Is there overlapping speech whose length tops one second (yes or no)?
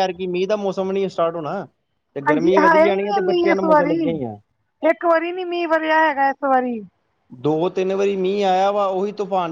yes